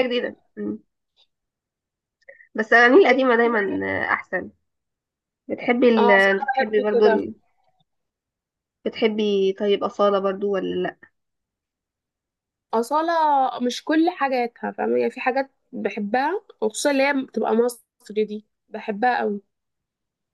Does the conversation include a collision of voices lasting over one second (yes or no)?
yes